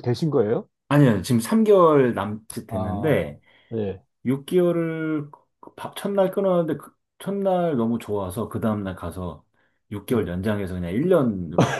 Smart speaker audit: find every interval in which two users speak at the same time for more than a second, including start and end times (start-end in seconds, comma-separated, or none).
none